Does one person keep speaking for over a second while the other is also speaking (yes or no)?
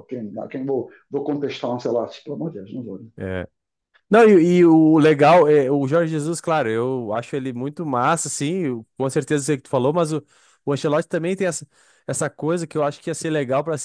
no